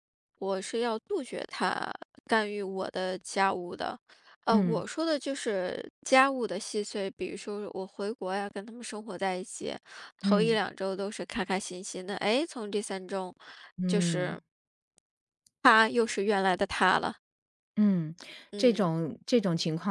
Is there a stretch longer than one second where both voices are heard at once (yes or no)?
no